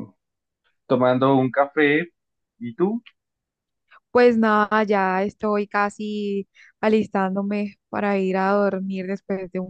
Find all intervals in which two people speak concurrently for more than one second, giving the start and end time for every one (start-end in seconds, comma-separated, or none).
none